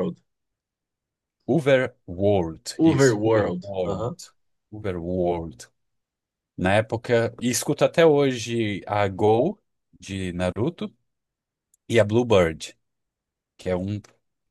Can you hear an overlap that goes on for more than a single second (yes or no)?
yes